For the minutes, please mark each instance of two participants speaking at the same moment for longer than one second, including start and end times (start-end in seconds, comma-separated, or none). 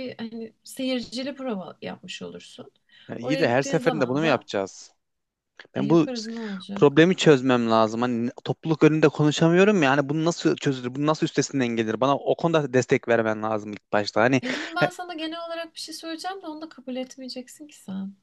3.2-4.5